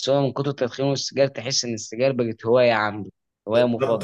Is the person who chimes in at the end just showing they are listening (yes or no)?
no